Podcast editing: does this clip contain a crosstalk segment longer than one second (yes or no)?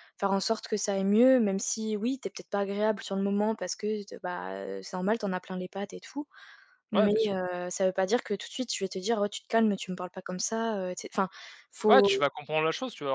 no